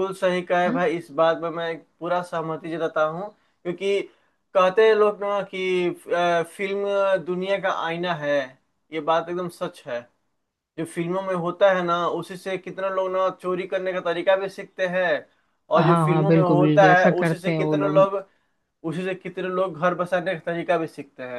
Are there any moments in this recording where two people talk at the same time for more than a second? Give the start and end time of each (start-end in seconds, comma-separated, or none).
15.8-18.1